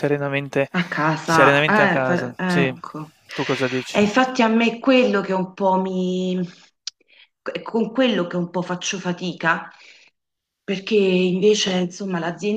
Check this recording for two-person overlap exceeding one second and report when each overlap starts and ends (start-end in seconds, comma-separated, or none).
1.2-2.7